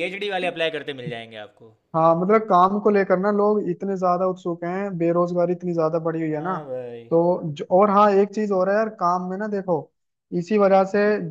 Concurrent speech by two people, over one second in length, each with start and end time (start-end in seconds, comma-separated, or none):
none